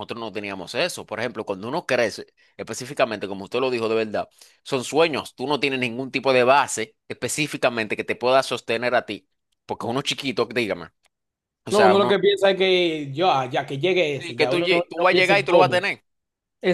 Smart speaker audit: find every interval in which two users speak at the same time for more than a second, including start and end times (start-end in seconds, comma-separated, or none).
14.2-15.9